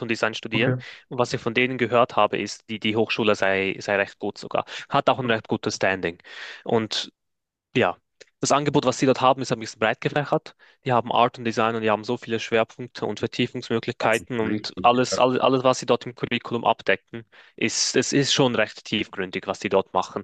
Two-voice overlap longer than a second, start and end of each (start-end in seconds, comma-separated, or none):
14.0-15.2